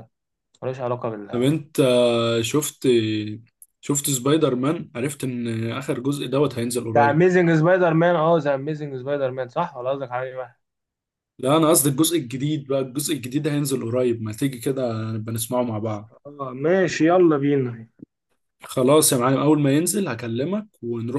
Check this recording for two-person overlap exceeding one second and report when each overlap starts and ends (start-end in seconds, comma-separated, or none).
none